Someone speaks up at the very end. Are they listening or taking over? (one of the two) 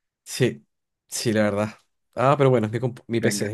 listening